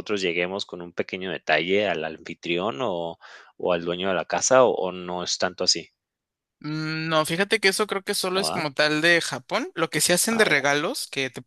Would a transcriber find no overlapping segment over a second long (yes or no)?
yes